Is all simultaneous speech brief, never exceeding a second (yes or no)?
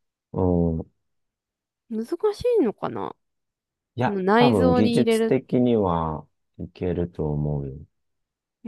no